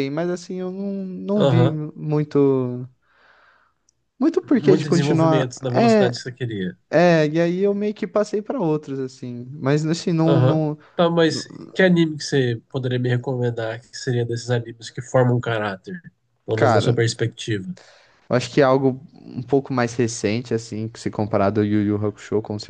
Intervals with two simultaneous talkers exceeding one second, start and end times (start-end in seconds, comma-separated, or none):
4.6-6.1